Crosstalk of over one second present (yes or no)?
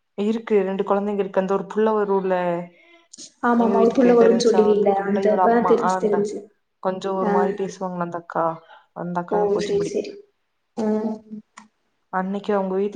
yes